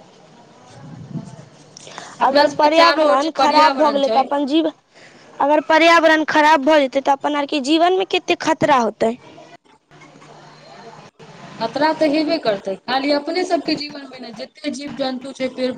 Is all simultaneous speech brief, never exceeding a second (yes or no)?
no